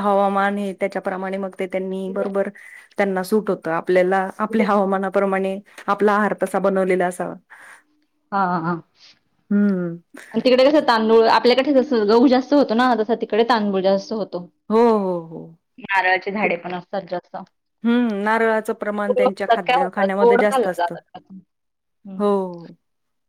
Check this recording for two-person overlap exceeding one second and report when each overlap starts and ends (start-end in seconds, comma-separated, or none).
19.1-20.9